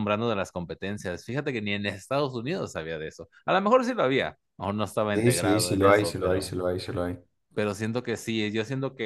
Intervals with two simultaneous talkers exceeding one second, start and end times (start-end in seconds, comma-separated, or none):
5.1-6.6